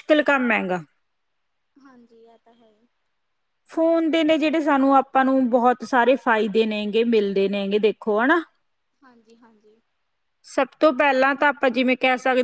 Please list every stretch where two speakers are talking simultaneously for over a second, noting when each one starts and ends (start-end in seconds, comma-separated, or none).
none